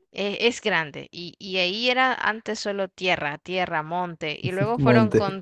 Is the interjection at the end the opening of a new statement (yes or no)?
no